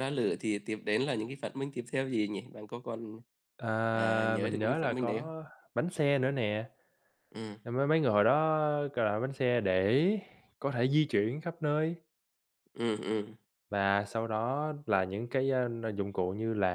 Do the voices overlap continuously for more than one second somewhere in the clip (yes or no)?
yes